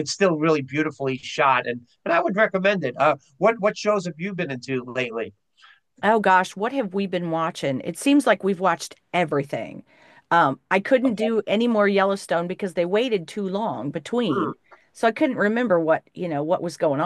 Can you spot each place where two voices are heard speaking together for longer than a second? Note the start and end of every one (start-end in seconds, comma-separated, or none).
none